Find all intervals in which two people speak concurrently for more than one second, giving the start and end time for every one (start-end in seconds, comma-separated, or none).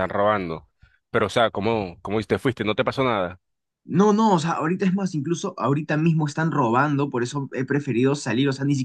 none